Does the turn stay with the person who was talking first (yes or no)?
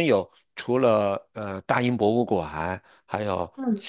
yes